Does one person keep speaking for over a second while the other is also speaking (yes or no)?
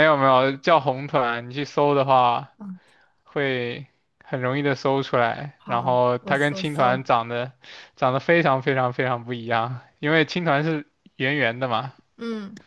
yes